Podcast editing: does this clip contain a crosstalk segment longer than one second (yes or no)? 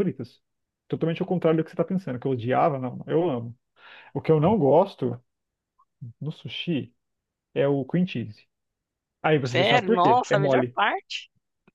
yes